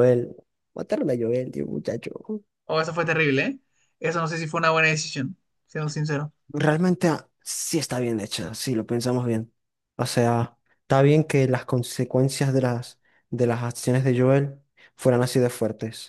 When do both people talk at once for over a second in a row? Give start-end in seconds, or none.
none